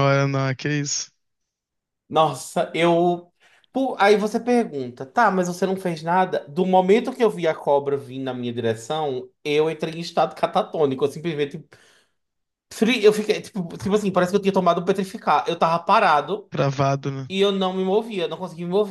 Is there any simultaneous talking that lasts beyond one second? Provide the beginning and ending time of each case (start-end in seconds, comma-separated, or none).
none